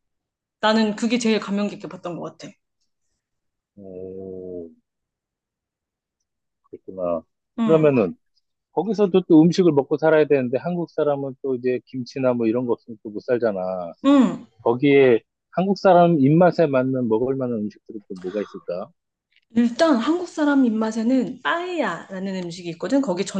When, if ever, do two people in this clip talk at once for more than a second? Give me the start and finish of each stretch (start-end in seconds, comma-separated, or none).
none